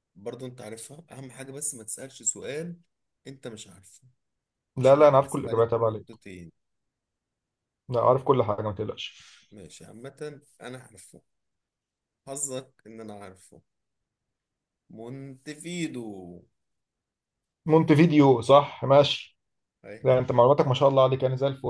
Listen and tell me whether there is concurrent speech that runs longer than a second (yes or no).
yes